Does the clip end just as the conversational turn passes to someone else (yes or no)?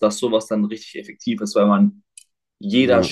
no